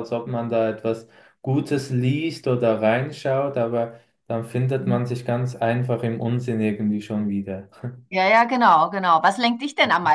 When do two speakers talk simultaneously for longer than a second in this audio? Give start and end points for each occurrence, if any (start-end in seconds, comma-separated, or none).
none